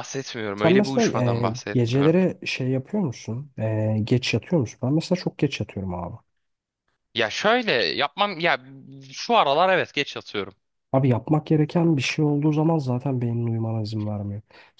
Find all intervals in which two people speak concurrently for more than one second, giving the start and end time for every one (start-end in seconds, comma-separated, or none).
0.6-2.1